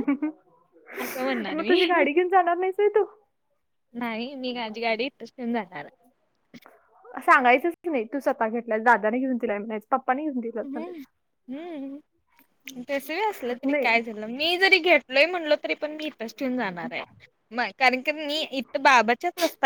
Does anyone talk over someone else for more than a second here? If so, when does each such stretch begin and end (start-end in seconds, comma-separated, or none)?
none